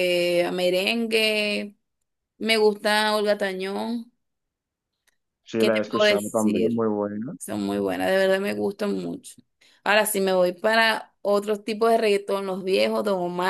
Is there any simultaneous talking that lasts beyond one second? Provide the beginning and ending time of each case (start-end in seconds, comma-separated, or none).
5.6-6.9